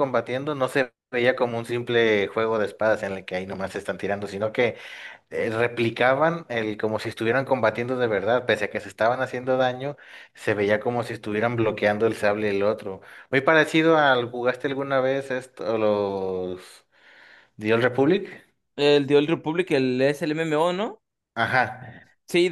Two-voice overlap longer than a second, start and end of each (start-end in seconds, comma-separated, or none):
none